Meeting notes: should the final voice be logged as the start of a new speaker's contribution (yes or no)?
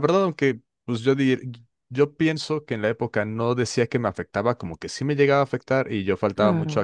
no